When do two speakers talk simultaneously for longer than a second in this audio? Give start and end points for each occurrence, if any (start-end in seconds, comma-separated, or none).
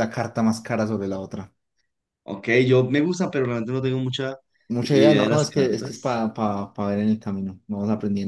4.8-6.2